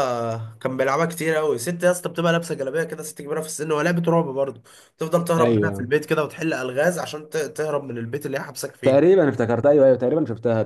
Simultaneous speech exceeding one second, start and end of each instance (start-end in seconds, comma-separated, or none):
none